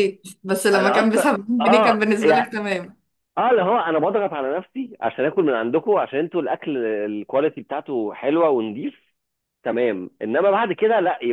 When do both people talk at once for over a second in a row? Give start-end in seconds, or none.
0.7-2.5